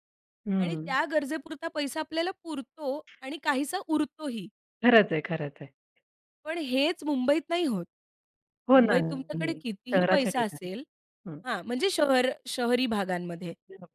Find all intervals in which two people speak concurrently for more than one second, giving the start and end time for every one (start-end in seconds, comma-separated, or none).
8.7-10.7